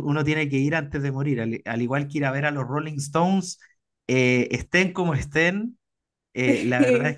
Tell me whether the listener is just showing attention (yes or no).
yes